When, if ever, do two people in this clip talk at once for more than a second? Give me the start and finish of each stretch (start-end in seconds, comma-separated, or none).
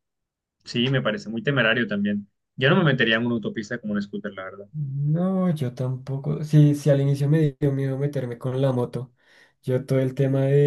none